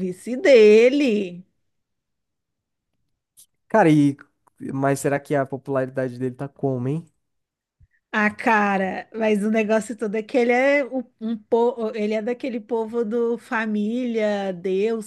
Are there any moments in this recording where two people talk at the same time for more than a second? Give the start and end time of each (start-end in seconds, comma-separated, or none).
none